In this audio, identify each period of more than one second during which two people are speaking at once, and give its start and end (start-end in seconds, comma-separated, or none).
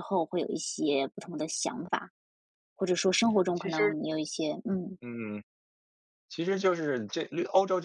none